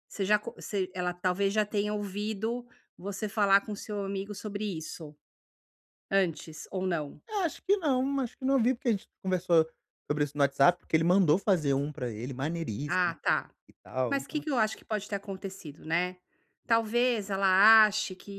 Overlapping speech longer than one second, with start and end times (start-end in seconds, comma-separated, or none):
none